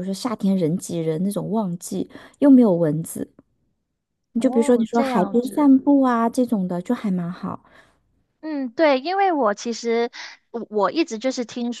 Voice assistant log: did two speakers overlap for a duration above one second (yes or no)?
yes